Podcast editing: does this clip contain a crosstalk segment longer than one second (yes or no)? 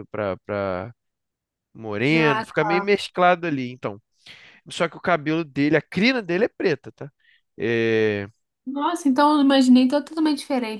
no